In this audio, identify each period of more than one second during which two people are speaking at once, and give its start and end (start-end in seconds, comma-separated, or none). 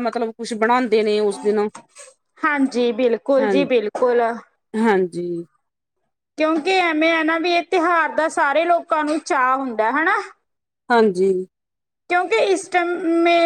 none